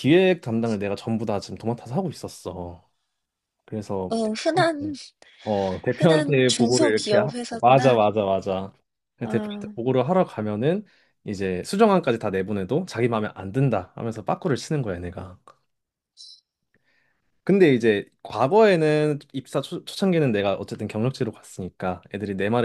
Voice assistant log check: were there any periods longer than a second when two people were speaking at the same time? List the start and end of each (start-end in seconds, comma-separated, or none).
6.0-8.0